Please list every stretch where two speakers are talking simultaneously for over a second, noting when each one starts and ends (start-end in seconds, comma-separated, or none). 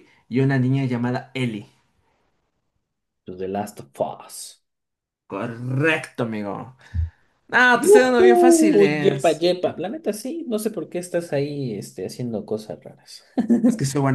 7.7-9.4